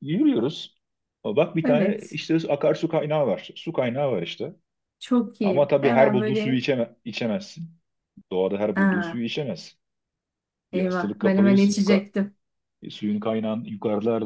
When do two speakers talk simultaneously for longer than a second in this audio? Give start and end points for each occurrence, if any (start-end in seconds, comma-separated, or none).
5.4-6.6, 10.7-12.0